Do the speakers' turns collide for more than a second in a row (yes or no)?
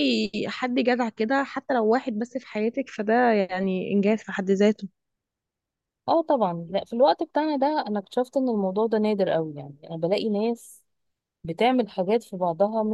no